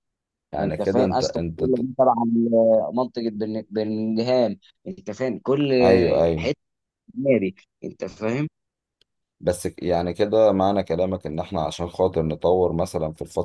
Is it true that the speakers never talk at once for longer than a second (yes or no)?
no